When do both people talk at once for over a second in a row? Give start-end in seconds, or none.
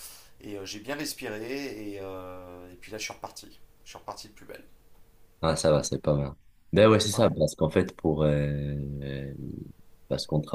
none